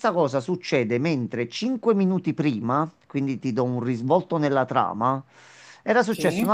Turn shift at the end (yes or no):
no